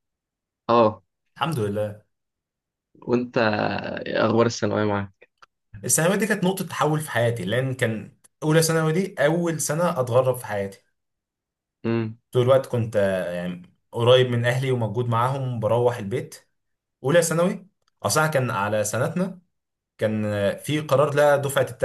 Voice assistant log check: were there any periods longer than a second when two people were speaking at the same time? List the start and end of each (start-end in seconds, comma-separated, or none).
none